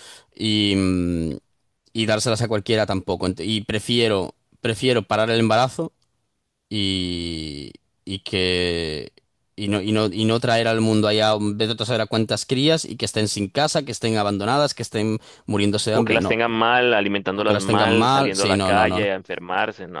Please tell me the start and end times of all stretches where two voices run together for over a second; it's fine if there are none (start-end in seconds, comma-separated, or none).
17.4-19.1